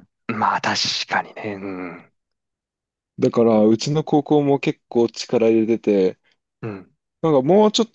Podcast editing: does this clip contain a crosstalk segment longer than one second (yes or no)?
no